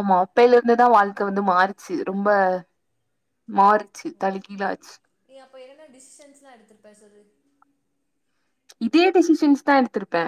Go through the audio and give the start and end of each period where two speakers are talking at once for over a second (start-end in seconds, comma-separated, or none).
none